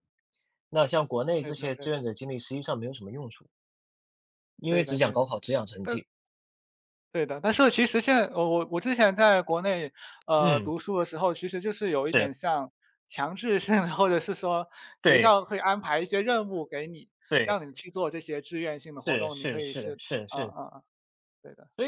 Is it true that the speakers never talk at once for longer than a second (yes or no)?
no